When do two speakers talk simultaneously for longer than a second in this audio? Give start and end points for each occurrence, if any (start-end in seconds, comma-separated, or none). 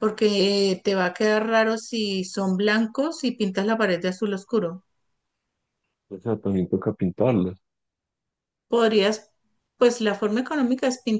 none